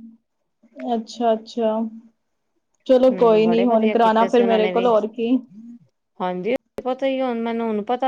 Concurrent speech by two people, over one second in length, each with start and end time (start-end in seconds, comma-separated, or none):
3.0-4.9